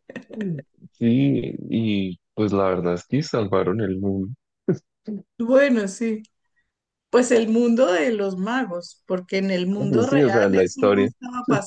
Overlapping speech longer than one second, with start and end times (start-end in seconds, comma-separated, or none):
9.8-11.1